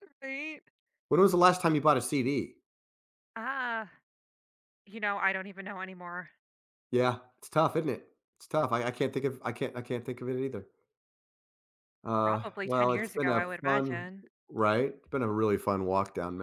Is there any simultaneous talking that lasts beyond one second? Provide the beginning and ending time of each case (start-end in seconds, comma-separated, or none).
12.2-14.1